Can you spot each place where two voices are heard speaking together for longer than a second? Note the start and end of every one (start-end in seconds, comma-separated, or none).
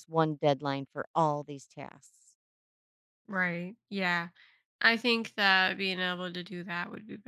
none